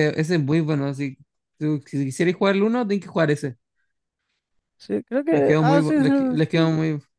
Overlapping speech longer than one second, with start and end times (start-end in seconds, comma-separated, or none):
5.3-6.7